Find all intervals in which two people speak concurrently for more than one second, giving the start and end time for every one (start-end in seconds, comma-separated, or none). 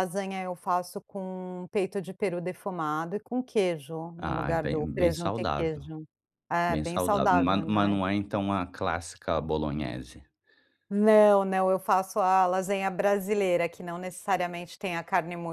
4.2-5.8, 6.7-8.0